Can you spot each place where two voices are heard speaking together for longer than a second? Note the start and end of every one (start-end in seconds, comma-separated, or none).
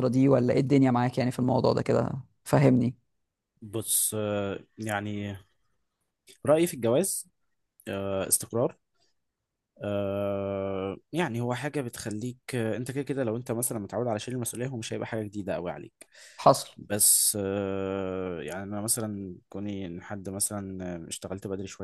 none